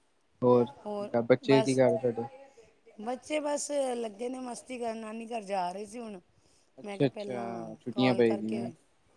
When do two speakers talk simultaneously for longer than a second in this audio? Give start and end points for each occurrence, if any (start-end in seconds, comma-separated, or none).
6.8-8.6